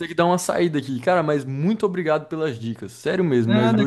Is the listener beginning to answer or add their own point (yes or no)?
yes